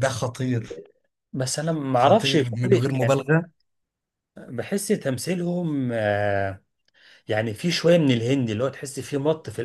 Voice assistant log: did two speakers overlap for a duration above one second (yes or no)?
yes